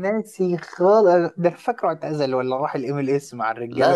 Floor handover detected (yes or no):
yes